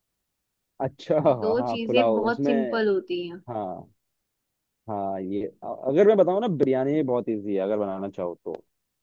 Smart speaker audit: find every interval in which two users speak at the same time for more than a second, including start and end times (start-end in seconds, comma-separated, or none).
1.3-2.8